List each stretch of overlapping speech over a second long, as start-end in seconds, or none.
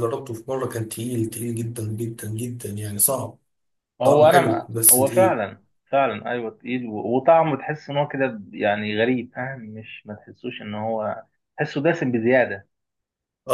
4.0-5.4